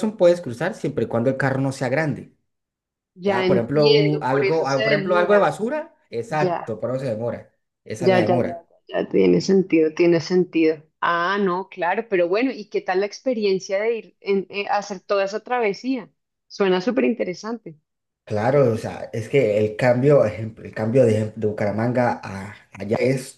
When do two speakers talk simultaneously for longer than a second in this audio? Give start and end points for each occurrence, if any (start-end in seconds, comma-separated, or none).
3.2-5.4